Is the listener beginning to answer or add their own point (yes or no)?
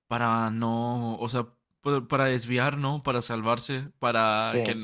no